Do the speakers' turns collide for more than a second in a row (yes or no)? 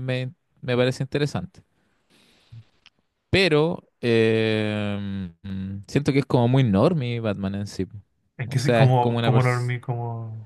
yes